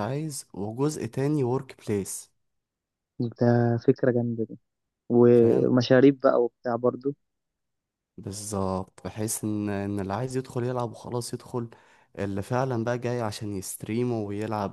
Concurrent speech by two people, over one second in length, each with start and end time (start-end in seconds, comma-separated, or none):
none